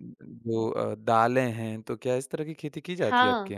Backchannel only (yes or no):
no